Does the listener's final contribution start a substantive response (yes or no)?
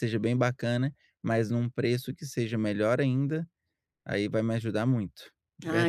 yes